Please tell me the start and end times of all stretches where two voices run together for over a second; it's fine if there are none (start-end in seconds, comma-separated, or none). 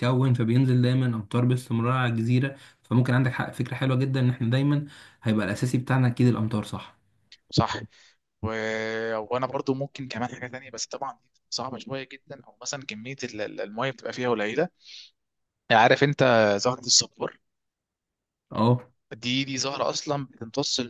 none